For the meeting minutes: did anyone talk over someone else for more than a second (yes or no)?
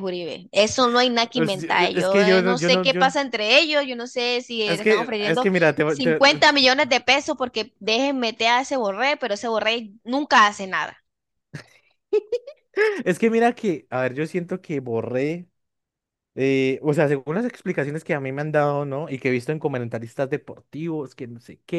yes